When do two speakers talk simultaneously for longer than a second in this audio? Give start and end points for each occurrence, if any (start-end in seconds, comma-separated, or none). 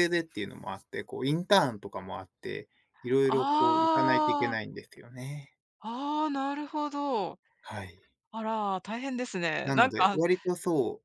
3.3-4.6